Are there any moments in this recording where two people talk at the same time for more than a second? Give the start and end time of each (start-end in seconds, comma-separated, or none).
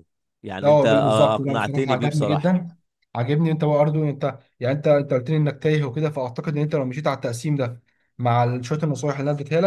0.6-2.6